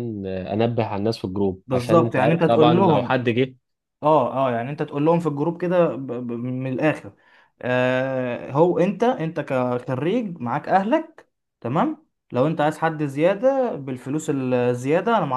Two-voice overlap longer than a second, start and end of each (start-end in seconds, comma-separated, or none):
1.7-3.2